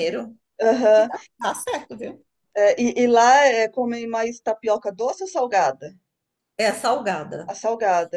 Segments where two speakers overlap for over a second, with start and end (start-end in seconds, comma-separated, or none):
none